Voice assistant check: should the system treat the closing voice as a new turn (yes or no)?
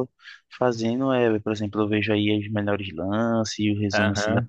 yes